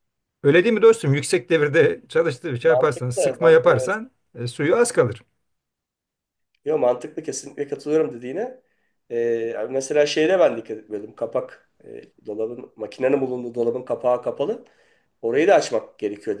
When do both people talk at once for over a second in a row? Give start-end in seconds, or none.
2.6-4.0